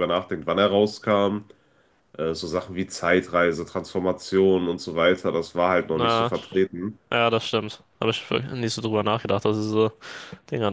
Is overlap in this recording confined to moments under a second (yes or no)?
yes